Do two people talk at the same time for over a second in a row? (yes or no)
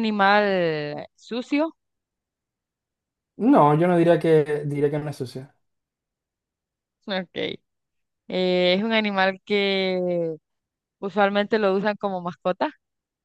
no